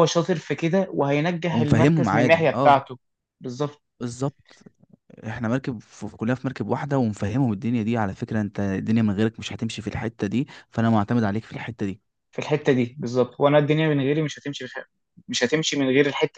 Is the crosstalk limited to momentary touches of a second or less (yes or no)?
no